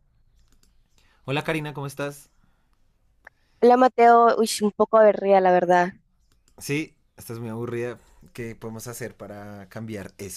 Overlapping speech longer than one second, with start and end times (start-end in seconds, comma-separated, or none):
none